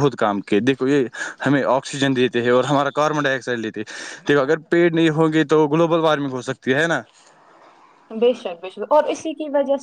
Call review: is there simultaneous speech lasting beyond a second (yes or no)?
no